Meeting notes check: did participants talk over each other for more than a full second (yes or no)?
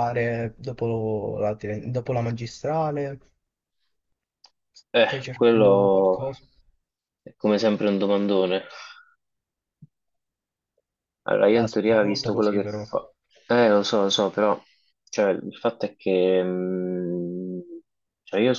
yes